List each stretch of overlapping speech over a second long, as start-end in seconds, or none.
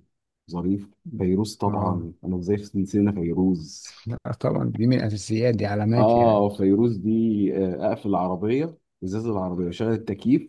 none